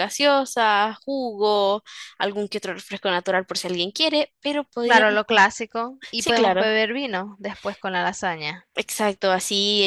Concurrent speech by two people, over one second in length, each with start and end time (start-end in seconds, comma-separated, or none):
none